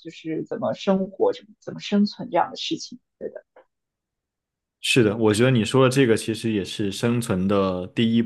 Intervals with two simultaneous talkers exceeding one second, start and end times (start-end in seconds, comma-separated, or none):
none